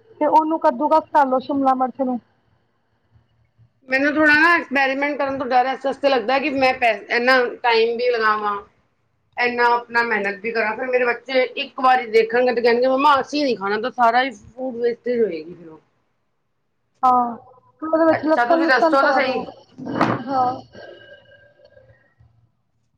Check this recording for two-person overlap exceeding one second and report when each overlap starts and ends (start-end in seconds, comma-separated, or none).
18.1-19.4